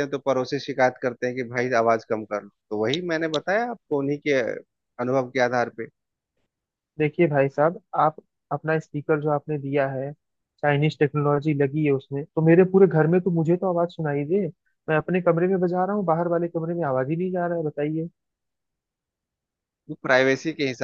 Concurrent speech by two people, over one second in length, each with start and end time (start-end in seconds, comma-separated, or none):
none